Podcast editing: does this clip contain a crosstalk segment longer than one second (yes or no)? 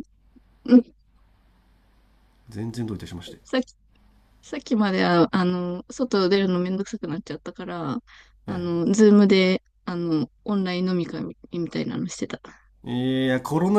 no